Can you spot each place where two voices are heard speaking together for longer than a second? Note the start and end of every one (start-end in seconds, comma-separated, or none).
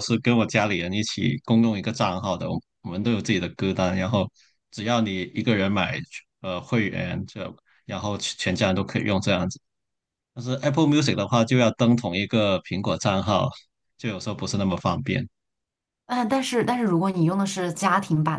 none